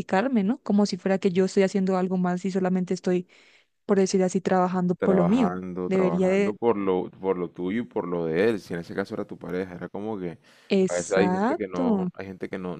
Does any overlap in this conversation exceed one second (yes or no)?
yes